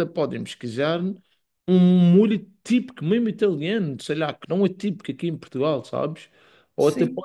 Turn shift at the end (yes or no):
no